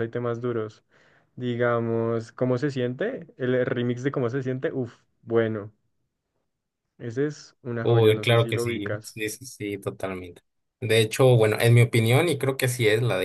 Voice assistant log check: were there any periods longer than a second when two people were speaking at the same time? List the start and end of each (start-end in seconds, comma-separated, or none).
7.8-9.1